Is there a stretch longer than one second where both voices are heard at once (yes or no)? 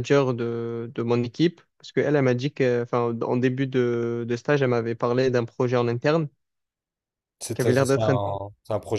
no